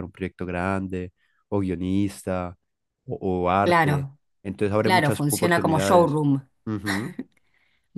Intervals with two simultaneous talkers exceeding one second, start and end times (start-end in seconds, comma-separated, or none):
4.8-6.2